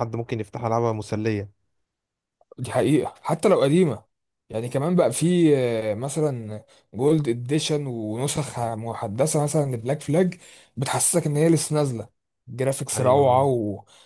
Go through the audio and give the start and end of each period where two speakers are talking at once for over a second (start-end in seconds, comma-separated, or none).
none